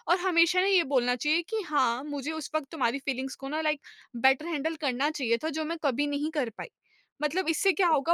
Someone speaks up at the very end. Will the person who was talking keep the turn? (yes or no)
yes